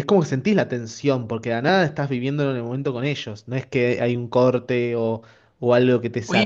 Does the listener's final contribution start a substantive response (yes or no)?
yes